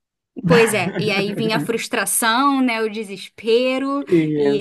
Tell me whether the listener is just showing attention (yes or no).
yes